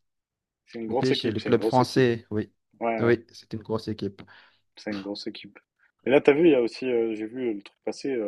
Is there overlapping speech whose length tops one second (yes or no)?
yes